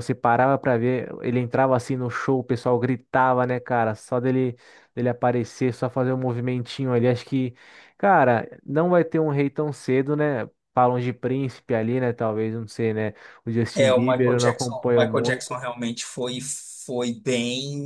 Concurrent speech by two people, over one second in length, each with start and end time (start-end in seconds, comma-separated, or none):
13.7-15.6